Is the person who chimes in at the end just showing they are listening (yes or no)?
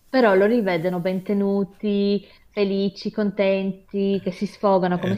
yes